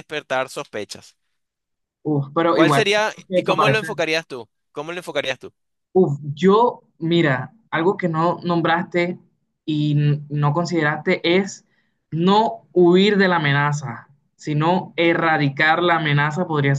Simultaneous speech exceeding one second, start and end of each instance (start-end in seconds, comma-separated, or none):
2.5-3.9